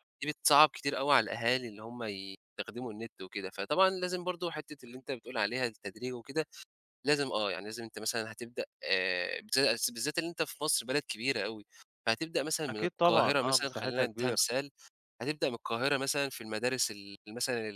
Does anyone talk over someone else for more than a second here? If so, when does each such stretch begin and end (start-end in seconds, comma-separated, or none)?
12.7-14.4